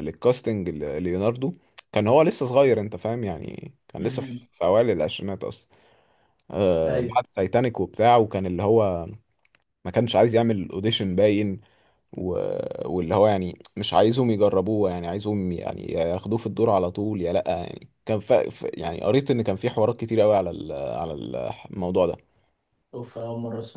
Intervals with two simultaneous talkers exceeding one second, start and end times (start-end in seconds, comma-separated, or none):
none